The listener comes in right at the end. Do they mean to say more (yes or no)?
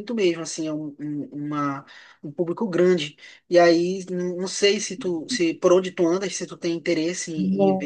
yes